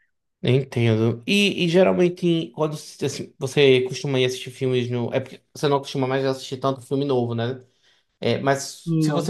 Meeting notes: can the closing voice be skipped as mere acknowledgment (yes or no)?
yes